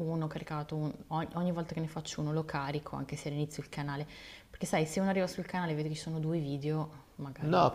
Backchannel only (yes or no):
no